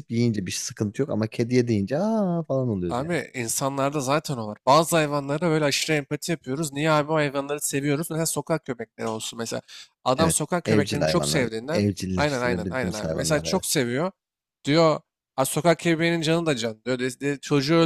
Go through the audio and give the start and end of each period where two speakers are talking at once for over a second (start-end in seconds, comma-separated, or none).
10.2-13.7